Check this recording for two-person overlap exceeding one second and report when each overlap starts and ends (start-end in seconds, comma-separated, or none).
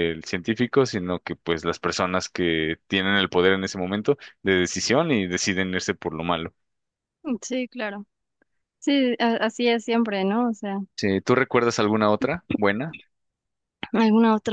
none